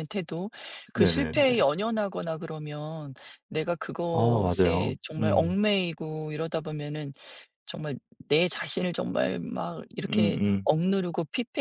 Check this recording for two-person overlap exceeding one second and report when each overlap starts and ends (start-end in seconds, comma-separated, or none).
4.1-5.6